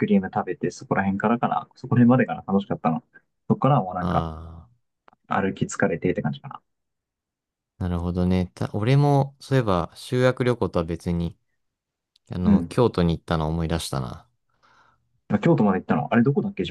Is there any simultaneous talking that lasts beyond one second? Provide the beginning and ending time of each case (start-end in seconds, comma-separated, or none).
none